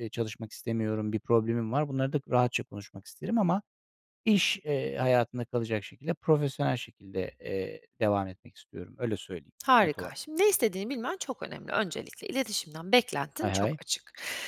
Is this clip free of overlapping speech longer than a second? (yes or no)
yes